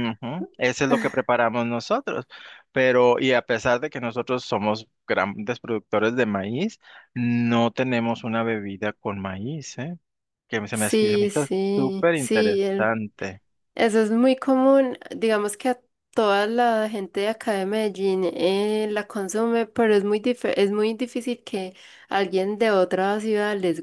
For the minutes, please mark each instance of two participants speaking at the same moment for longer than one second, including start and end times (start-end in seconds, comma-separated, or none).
10.7-13.0